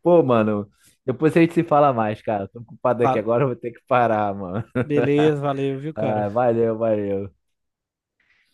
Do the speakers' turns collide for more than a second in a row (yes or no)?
no